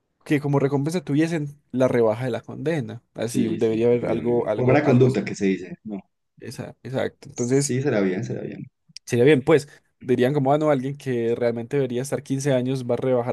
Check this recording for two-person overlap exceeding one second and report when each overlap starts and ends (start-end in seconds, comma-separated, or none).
3.3-5.4